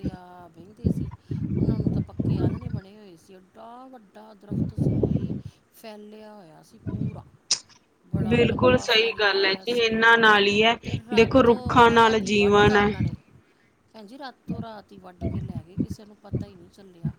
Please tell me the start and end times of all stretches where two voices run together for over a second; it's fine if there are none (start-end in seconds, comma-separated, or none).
8.3-9.9, 11.1-12.9